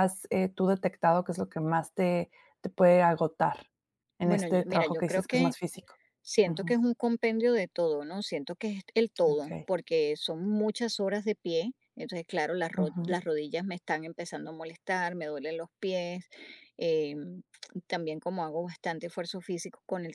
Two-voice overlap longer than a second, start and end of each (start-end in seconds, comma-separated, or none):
4.2-5.5